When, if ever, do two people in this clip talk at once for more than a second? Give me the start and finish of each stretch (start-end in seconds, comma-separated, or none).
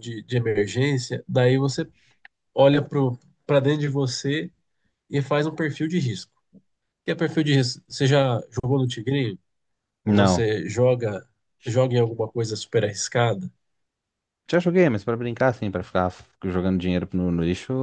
none